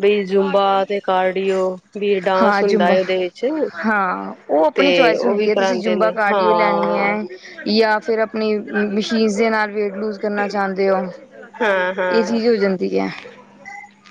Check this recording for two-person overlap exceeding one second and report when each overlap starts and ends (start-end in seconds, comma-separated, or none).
4.7-7.1